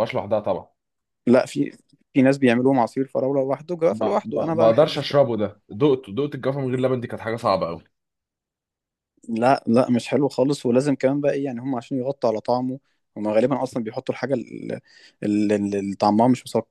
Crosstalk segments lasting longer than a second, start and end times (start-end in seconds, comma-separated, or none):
3.9-5.2